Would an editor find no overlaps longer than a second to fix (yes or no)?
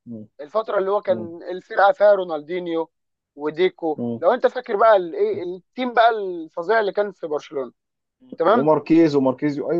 yes